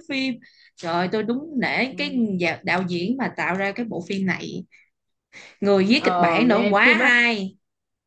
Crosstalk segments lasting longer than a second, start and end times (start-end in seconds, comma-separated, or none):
6.0-7.2